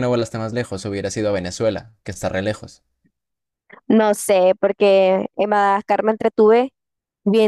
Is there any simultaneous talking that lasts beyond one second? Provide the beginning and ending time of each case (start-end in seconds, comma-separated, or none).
none